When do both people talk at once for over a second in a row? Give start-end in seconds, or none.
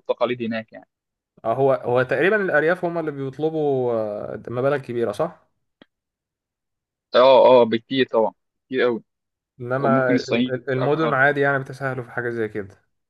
9.8-11.2